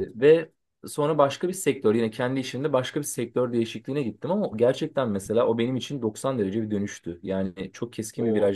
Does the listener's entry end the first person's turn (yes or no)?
no